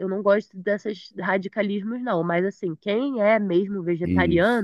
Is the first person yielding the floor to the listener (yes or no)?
no